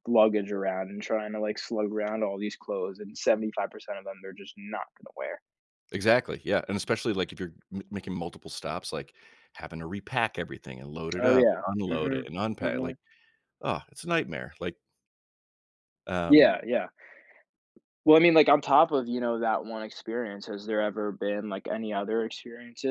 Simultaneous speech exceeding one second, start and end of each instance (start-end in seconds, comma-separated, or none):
11.2-12.9